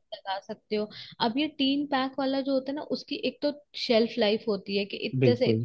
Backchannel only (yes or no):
yes